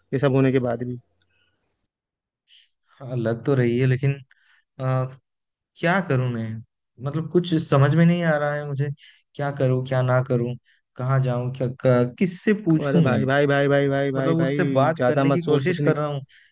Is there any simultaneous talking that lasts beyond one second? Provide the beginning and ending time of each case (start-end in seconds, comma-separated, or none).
14.2-15.9